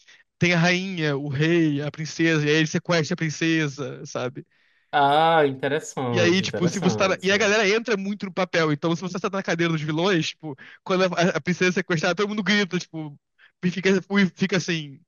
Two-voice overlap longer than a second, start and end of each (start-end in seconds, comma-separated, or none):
6.1-7.5